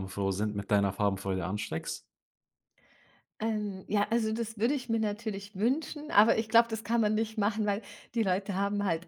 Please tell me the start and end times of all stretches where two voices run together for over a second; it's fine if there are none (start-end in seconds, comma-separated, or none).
none